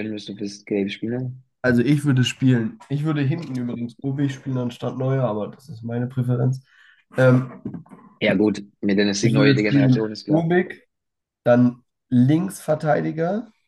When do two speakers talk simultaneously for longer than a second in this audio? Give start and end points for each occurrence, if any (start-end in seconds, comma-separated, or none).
9.2-10.5